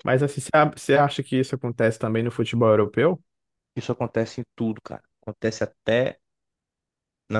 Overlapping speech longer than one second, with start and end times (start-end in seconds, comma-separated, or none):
none